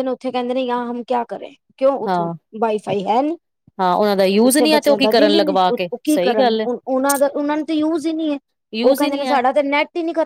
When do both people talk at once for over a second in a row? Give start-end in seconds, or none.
4.4-6.7